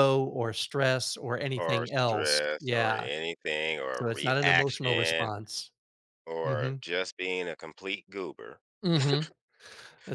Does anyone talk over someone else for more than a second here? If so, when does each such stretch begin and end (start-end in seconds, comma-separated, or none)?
1.6-3.1, 3.9-5.3